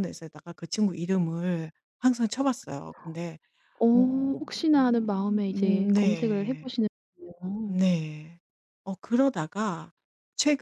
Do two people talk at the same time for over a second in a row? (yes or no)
yes